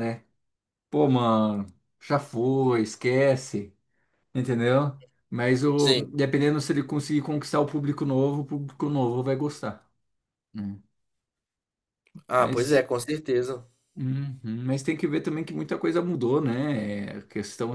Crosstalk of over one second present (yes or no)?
no